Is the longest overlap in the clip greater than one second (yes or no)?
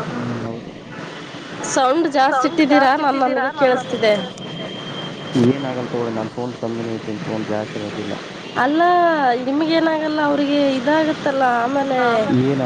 yes